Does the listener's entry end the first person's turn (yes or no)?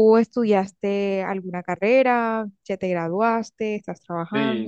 yes